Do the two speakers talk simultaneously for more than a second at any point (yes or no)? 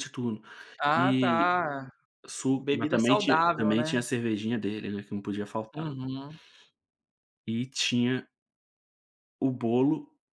yes